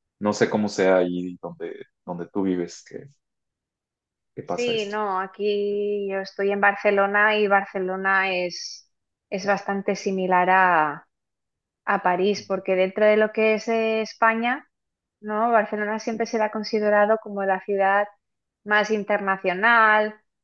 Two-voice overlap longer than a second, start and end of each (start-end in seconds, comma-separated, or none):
none